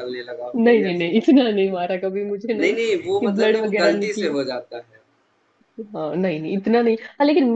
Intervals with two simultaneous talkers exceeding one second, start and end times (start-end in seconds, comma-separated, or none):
2.6-4.3